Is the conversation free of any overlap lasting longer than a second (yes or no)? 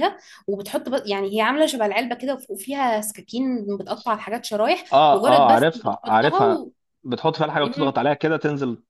no